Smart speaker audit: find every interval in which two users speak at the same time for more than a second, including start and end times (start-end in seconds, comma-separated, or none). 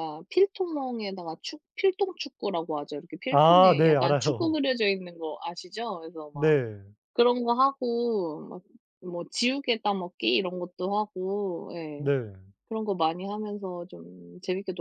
3.3-4.6